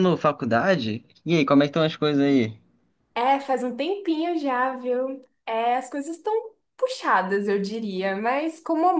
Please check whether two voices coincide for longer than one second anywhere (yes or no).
no